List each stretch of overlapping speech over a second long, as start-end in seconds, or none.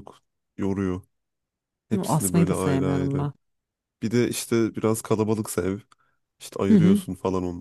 2.1-3.3